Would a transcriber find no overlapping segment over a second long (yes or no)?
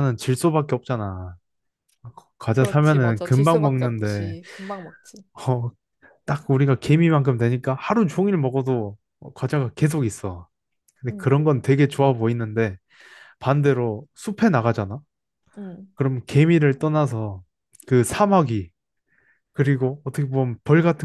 no